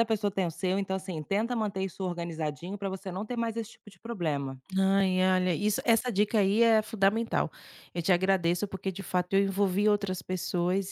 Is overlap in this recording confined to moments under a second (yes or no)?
yes